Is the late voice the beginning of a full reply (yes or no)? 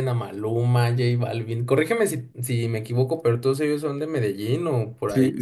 yes